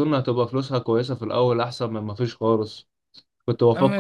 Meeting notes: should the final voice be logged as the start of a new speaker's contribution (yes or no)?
no